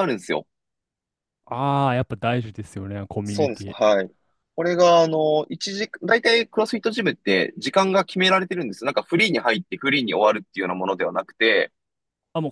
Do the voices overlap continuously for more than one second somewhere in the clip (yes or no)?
no